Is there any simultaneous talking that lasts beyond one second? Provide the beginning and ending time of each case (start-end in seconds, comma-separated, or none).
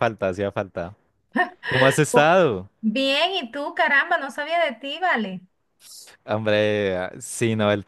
none